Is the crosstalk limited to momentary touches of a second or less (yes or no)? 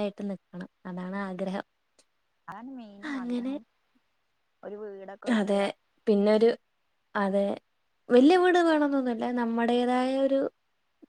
yes